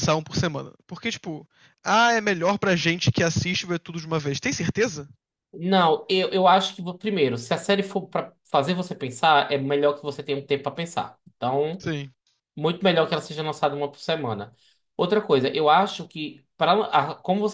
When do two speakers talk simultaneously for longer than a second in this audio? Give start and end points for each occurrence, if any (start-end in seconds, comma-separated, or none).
none